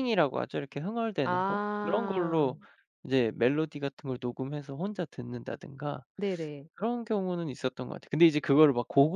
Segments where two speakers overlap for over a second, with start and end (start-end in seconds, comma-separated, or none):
1.2-2.5